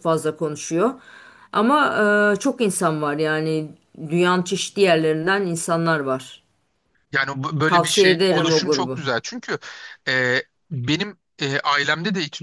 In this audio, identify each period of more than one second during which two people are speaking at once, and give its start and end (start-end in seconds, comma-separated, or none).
7.7-9.0